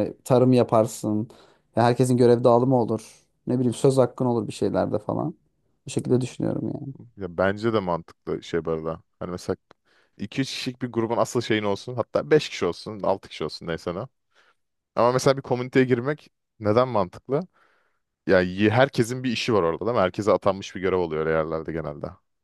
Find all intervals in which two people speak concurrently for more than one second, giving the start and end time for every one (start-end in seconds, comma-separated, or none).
none